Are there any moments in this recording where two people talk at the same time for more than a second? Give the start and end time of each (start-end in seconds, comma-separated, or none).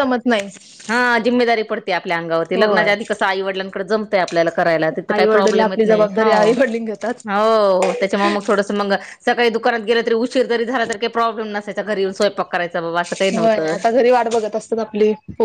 5.1-6.5